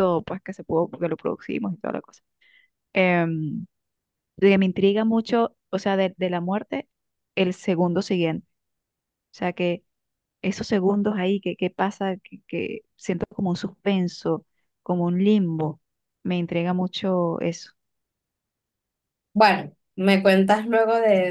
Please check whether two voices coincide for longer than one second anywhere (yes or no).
no